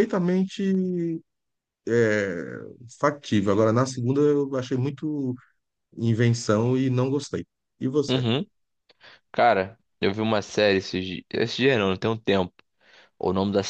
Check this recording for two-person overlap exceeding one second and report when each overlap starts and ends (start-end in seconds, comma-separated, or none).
none